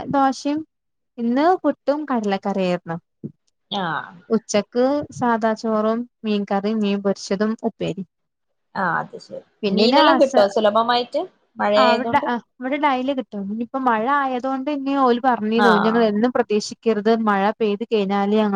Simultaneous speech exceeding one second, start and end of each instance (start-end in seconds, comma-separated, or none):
none